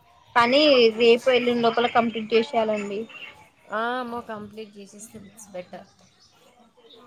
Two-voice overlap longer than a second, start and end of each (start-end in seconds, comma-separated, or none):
none